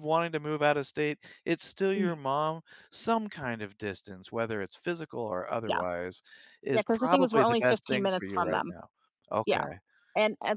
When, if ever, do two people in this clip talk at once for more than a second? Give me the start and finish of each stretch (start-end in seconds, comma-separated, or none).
6.7-8.7